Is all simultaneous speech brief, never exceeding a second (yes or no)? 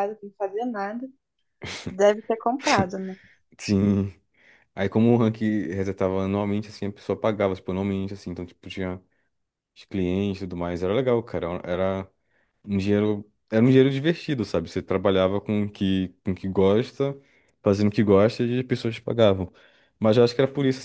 yes